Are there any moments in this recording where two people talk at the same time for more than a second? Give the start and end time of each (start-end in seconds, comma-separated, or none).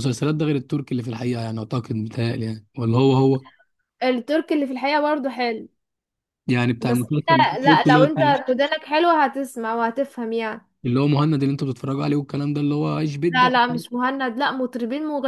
6.8-8.5